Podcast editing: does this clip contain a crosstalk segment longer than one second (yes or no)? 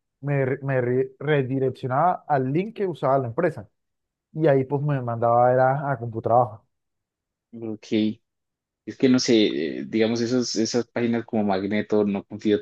no